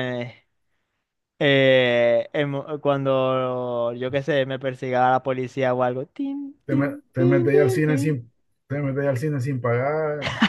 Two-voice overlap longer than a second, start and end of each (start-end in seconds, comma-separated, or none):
6.6-8.2